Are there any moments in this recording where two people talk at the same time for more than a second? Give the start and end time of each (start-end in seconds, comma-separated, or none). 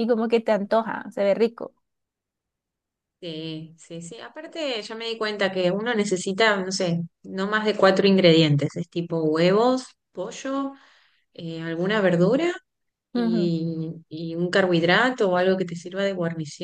none